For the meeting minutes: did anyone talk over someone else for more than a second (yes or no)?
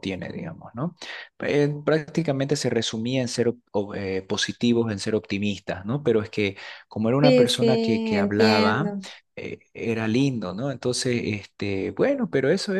yes